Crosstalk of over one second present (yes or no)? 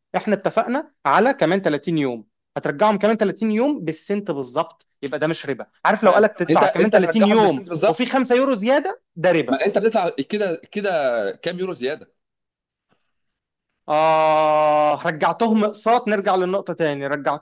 yes